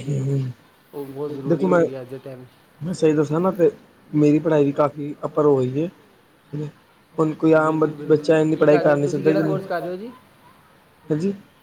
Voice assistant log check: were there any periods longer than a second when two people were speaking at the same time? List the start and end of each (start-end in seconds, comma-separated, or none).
7.6-9.9